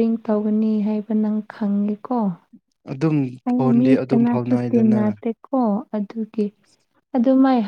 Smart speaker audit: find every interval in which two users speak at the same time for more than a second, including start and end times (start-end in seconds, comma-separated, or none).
3.5-5.2